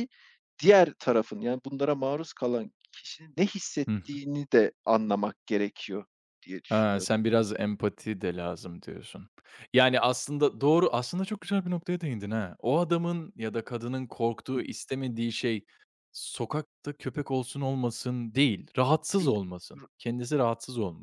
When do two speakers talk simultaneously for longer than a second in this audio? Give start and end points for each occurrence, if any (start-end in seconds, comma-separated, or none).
none